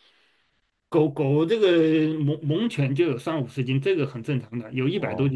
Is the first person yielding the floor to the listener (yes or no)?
yes